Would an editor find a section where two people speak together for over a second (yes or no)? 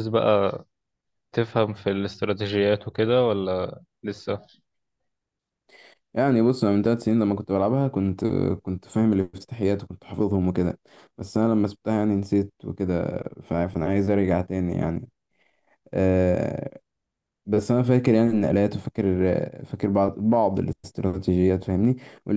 no